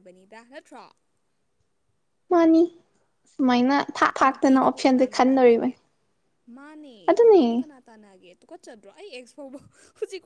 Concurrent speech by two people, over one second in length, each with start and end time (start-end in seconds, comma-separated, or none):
4.3-5.7